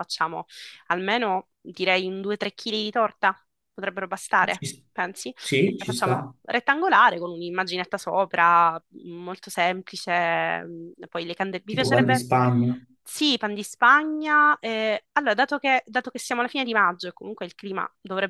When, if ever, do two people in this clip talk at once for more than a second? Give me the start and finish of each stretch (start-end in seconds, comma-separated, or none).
none